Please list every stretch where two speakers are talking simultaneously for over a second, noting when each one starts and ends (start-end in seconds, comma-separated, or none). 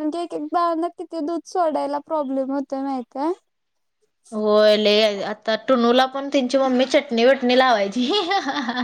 none